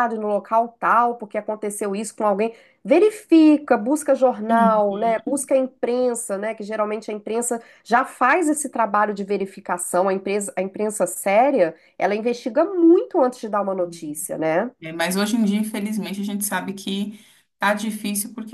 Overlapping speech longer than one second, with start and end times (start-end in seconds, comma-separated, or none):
none